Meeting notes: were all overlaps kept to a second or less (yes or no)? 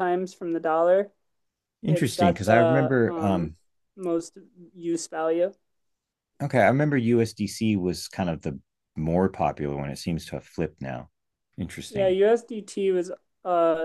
no